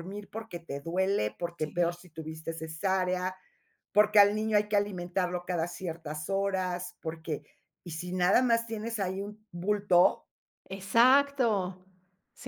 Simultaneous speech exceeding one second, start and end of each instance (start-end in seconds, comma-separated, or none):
none